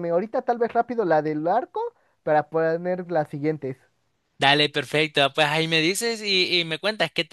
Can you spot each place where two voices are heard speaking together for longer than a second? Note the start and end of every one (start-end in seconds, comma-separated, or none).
none